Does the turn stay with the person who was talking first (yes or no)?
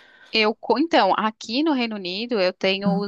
yes